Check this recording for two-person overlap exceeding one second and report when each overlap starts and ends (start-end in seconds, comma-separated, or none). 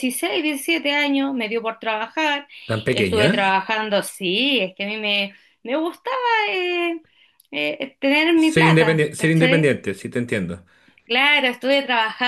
8.4-9.7